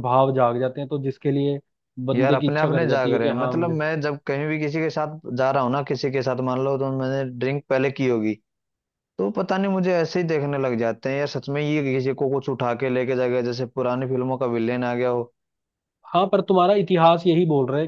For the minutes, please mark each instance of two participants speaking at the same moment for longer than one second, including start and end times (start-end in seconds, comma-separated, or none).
2.1-3.8